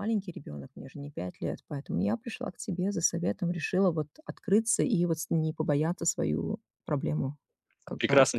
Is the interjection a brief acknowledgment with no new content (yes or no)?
no